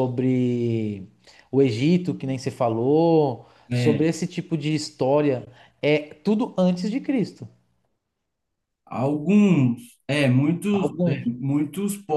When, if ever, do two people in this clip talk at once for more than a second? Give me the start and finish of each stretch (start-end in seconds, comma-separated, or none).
none